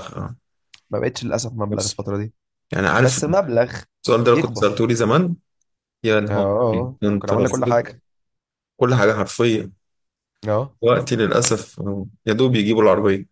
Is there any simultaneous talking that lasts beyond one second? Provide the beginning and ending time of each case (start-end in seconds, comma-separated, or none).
6.3-7.9